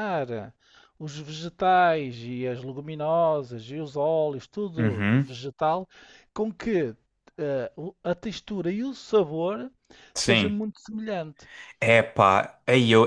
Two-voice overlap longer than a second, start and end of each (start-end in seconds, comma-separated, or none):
none